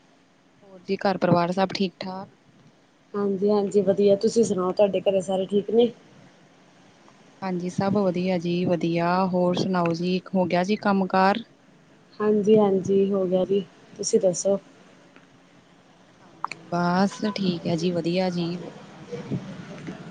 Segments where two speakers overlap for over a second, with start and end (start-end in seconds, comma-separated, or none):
none